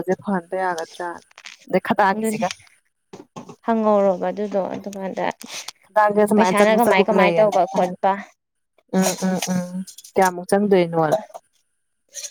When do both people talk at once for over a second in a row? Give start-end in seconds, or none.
6.3-7.9